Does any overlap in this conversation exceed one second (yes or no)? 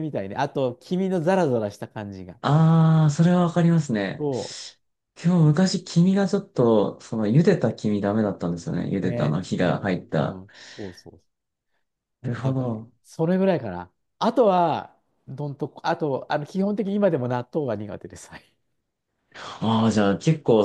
yes